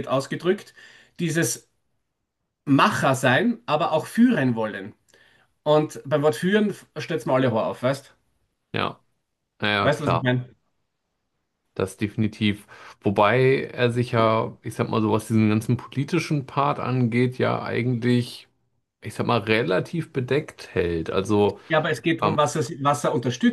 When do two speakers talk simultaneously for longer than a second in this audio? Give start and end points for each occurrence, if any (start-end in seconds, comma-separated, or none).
none